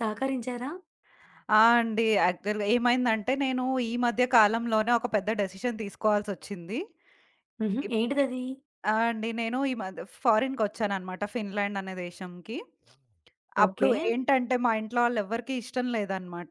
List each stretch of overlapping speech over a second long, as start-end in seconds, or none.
none